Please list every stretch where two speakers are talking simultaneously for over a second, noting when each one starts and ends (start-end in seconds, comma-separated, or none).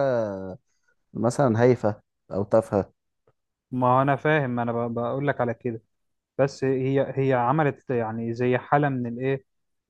none